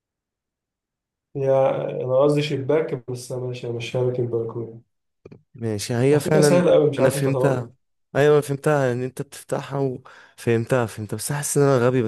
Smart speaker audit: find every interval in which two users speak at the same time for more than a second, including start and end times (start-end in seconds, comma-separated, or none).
6.1-7.7